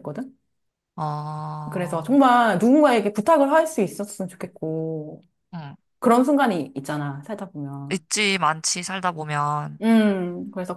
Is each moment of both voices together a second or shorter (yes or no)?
yes